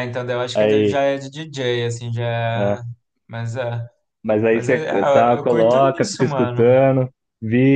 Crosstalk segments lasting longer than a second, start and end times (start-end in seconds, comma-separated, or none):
4.5-6.7